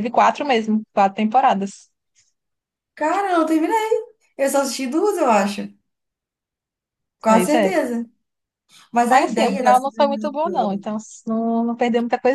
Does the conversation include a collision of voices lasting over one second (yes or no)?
yes